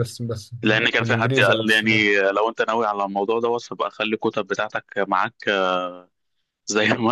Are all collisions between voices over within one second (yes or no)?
no